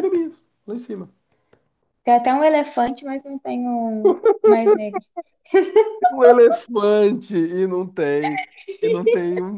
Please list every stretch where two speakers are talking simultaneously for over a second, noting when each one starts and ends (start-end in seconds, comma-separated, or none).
none